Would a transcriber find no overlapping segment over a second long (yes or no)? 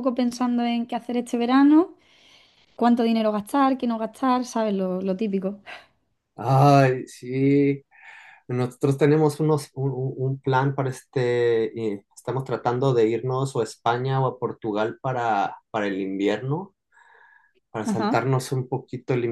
yes